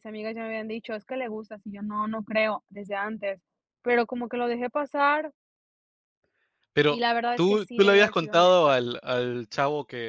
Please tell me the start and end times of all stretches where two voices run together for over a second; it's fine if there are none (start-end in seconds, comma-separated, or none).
6.9-8.8